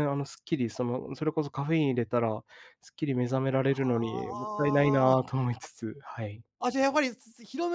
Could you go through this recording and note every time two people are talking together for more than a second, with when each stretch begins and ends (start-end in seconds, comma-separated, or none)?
4.0-5.2